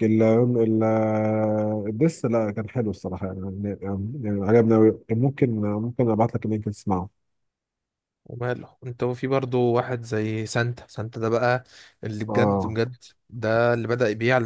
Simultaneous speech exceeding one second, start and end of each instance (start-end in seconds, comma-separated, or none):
none